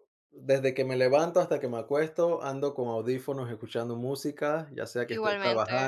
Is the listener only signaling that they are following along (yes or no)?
yes